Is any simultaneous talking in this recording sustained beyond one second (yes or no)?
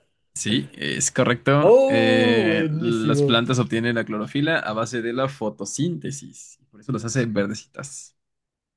yes